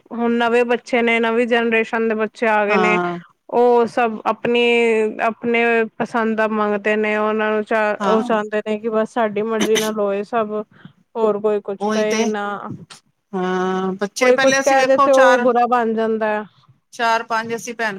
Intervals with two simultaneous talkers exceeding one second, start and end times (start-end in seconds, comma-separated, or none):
14.2-15.5